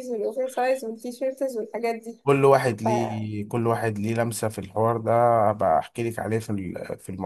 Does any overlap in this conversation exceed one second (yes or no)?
no